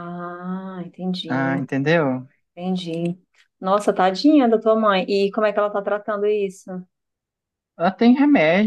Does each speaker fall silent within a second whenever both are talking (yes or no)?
yes